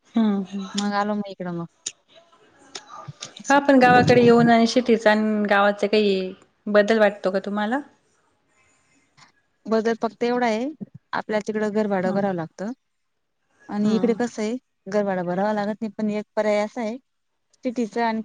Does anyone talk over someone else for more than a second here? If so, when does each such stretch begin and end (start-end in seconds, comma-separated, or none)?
none